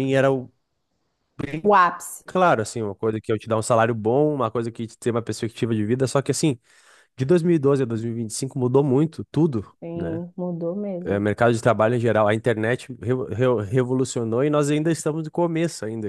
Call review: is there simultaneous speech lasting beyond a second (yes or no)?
no